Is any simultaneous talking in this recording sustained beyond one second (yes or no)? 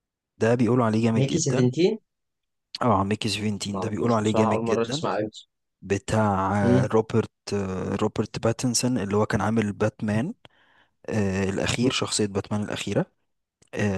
yes